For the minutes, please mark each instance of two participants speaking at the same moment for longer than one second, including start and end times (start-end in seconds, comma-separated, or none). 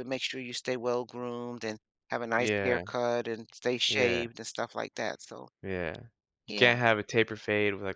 none